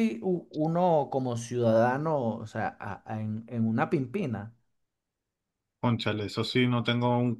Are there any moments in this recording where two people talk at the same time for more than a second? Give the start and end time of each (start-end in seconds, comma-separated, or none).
none